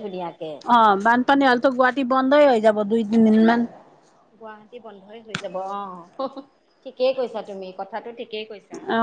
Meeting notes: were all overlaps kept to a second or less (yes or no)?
yes